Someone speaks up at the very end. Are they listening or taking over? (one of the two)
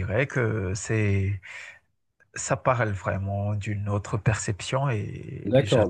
taking over